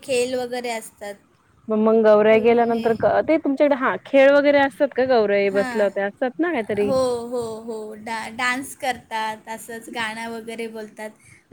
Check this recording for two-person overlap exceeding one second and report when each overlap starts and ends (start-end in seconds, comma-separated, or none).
none